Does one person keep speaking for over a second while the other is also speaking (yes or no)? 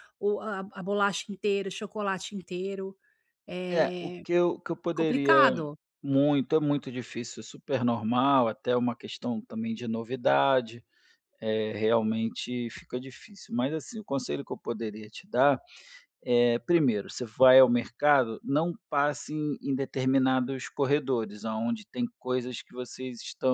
no